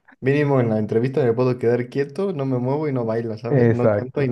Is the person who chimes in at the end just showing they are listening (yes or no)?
no